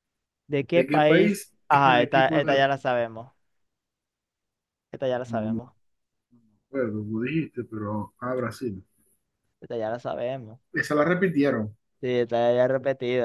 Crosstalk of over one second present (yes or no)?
yes